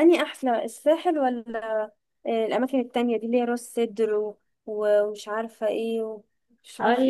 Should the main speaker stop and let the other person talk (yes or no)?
yes